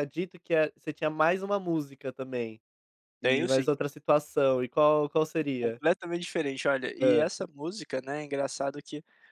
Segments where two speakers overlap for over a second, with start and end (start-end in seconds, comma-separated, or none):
none